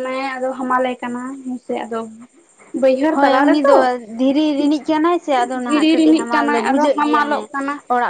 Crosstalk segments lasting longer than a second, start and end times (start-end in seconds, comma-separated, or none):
5.7-7.5